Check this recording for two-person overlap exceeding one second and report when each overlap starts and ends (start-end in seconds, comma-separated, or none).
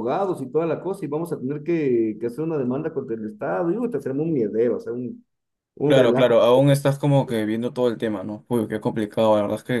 none